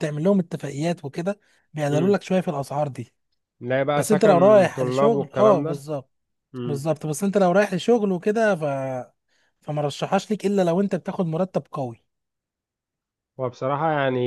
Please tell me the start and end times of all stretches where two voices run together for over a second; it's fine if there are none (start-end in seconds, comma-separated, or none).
4.0-5.8